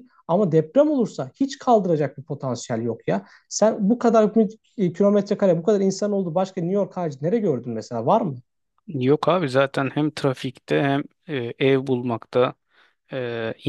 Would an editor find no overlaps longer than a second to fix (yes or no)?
yes